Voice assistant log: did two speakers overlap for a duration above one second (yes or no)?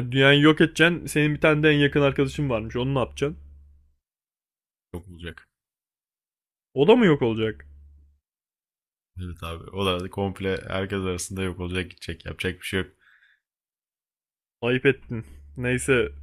no